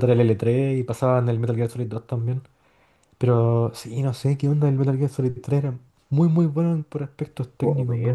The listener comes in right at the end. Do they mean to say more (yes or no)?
yes